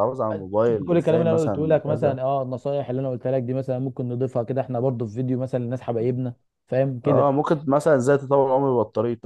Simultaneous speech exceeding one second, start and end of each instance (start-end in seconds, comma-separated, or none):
0.6-2.2